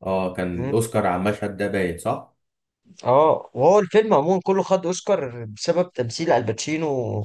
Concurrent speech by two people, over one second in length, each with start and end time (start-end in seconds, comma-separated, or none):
none